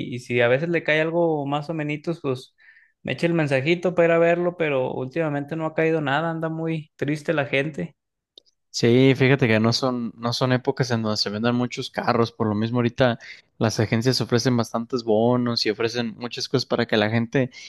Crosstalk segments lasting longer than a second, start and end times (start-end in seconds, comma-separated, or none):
none